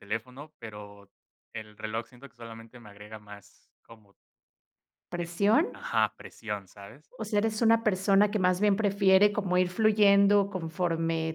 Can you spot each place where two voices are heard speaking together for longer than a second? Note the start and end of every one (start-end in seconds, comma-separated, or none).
none